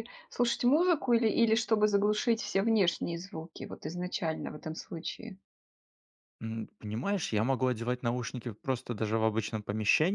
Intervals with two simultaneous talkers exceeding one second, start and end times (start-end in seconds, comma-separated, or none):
none